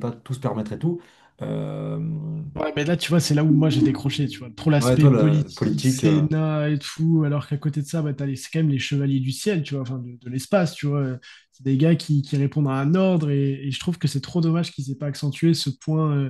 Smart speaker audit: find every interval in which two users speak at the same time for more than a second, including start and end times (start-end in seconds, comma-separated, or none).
4.8-6.3